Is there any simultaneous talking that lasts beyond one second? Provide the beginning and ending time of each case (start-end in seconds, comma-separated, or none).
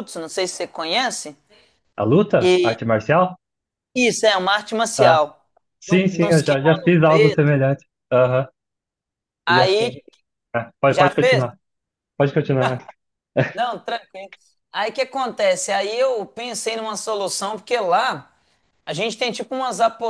5.9-7.6